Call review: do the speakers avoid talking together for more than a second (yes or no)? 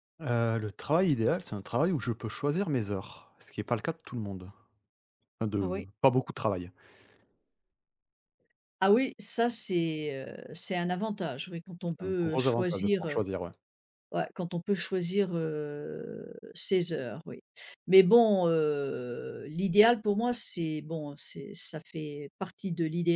no